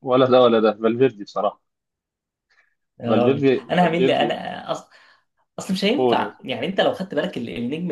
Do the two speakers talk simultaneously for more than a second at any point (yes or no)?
yes